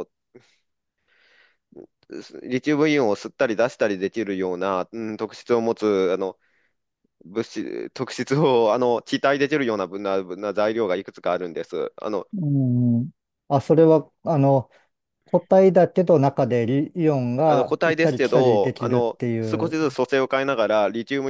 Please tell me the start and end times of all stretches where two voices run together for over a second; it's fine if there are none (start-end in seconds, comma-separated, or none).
17.4-19.8